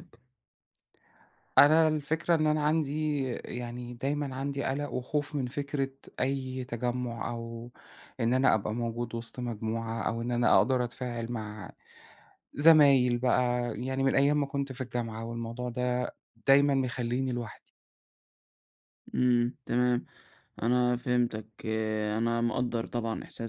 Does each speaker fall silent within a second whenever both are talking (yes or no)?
yes